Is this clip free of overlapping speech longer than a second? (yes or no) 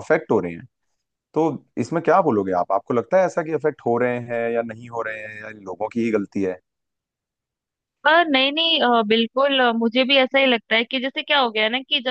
yes